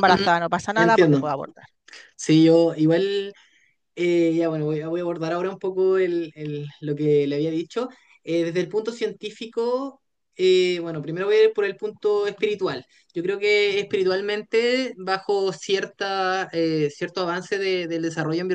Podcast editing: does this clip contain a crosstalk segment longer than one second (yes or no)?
no